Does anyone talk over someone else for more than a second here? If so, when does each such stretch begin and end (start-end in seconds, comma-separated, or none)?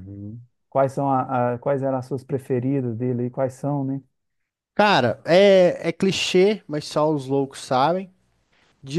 none